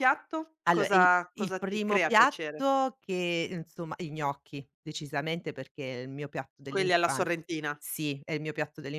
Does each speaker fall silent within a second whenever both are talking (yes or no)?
no